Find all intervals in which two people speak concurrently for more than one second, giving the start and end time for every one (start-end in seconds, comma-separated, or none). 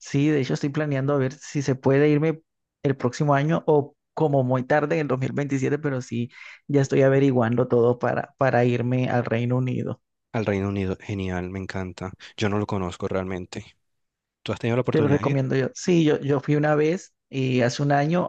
none